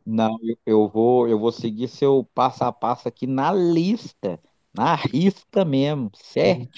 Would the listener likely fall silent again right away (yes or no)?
yes